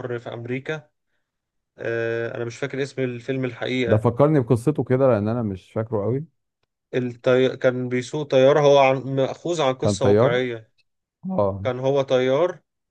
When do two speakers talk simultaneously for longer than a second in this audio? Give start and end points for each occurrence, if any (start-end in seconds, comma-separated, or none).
none